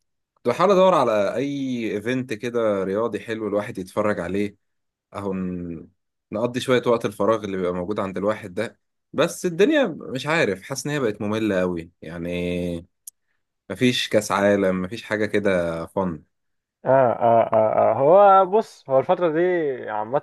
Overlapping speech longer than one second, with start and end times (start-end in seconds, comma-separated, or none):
none